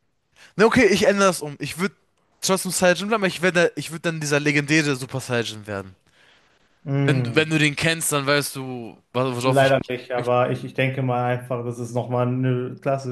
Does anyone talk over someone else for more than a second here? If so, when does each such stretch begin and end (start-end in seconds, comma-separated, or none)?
none